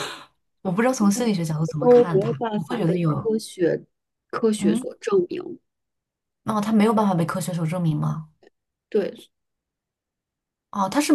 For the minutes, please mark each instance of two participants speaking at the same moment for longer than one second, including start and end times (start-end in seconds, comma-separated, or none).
1.8-3.2